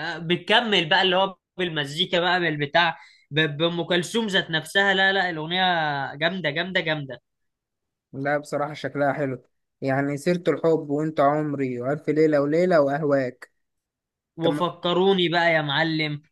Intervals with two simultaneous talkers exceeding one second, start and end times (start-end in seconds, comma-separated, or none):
none